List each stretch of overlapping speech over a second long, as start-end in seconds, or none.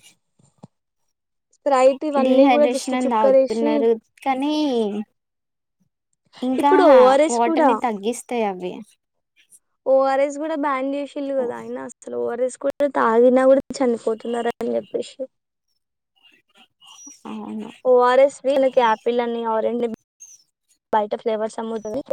2.2-3.7